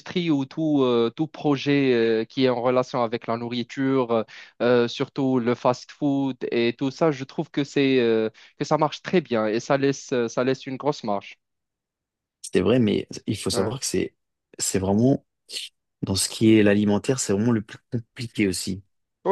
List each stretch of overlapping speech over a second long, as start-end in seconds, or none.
none